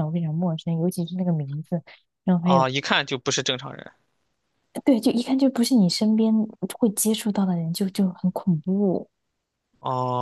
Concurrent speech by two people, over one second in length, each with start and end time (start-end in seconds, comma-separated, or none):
none